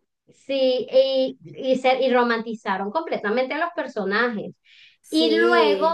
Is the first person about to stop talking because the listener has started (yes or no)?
no